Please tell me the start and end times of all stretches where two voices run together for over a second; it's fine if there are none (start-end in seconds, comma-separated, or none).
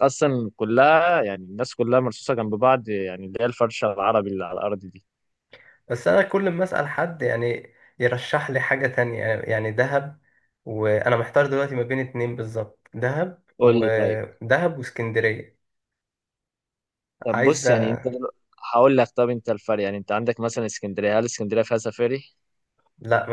none